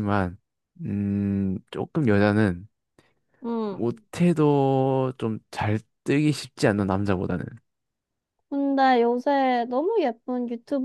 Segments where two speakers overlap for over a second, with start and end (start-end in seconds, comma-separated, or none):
none